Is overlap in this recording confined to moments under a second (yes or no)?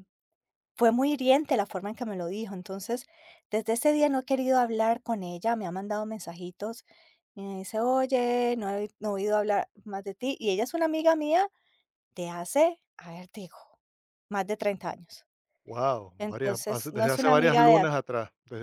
no